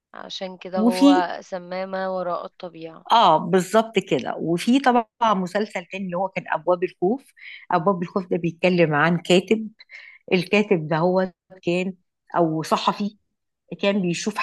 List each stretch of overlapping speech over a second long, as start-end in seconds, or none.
none